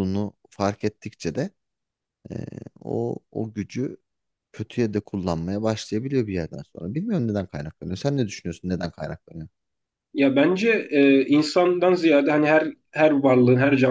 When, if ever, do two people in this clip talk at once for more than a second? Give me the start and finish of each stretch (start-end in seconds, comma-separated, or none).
none